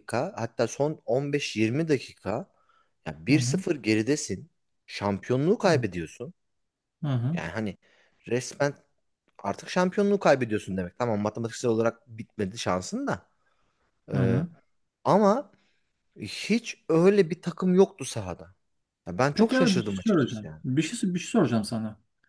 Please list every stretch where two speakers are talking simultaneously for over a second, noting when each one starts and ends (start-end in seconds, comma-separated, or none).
19.3-20.6